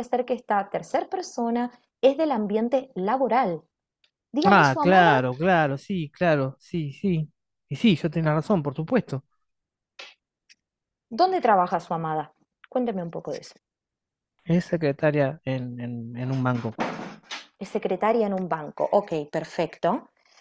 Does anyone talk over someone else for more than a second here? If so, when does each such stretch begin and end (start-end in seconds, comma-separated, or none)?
none